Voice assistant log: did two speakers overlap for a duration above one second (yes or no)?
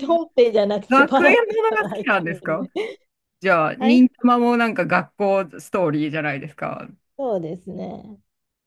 yes